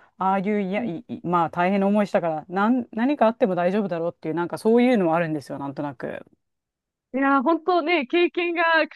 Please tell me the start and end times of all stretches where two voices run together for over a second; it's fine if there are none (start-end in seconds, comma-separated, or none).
none